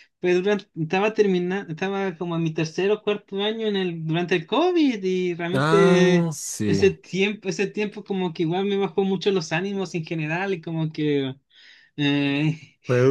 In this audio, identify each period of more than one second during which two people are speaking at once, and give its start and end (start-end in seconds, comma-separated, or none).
5.5-6.9